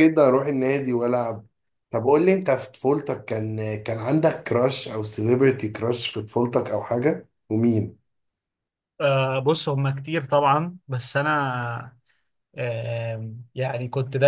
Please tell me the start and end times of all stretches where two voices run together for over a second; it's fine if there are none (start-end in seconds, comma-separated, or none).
none